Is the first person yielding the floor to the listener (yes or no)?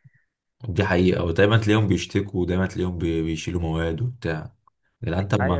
yes